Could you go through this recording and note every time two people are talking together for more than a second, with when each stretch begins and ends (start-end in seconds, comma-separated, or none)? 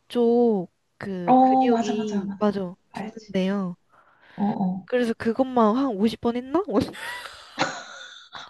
1.2-3.3